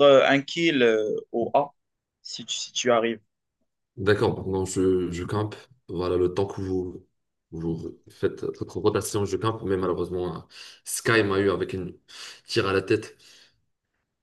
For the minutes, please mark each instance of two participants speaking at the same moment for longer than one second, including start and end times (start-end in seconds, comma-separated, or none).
none